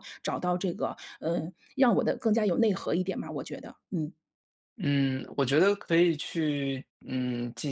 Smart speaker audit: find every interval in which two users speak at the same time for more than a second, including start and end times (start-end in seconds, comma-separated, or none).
none